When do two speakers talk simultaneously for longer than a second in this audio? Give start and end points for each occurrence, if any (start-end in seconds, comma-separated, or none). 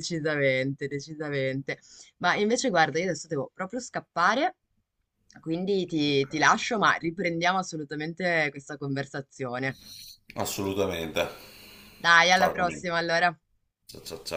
none